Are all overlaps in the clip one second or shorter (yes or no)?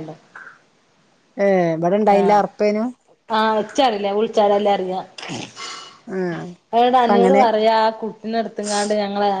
yes